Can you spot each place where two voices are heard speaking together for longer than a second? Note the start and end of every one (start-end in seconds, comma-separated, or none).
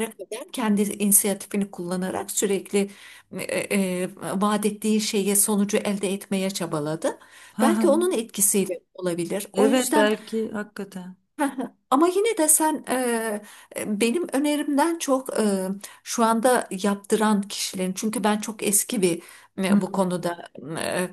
none